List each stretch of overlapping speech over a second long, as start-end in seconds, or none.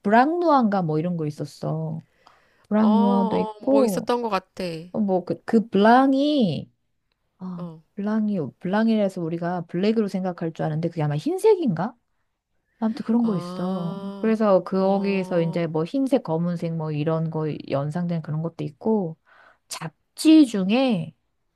2.7-4.1, 13.2-14.5